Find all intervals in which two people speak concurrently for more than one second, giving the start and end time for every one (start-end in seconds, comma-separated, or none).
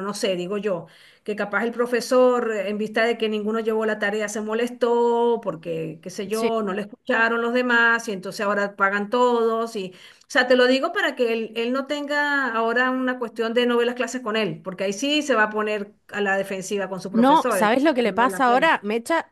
17.1-18.7